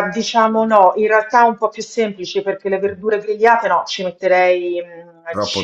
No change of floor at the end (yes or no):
yes